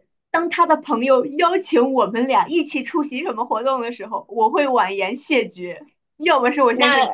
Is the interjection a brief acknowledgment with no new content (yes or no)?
yes